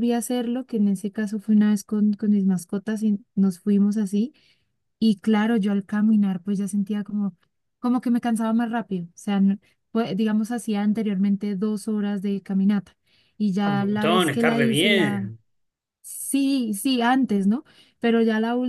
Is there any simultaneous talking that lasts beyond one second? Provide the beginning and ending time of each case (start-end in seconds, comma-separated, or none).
13.6-15.3